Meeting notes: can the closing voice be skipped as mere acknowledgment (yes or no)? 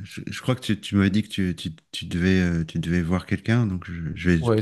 no